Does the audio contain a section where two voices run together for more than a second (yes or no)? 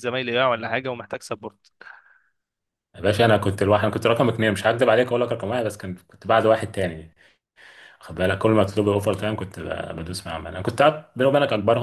no